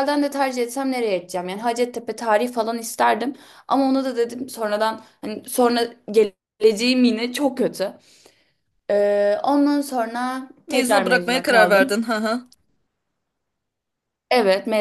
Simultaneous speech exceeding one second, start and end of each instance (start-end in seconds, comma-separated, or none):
10.7-12.0